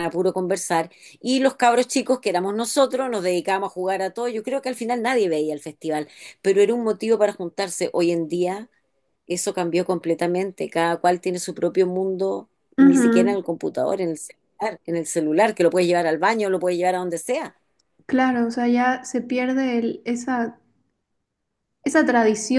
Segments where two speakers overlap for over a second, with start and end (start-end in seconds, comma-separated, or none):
none